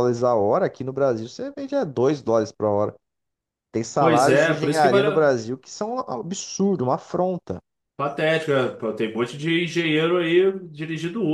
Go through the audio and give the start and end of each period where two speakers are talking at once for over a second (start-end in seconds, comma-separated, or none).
4.0-5.3